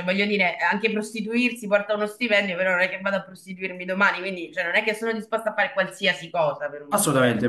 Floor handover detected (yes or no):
yes